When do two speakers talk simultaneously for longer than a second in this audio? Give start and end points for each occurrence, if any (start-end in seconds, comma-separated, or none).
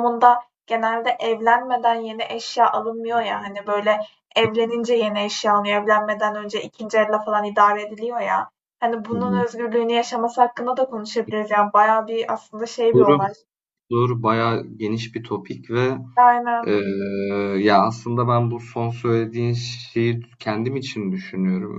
none